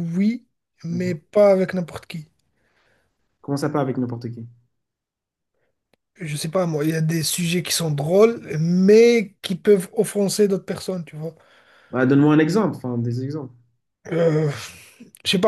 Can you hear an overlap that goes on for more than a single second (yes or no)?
no